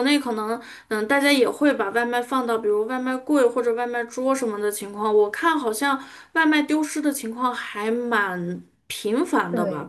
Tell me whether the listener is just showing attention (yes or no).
yes